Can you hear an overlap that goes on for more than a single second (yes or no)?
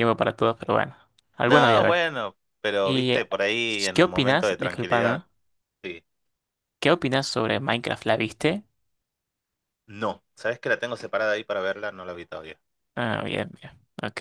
yes